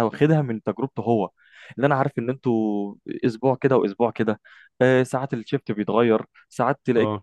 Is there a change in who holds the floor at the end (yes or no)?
no